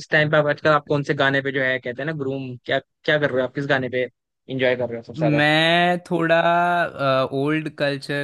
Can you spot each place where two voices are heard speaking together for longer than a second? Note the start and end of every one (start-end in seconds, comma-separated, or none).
none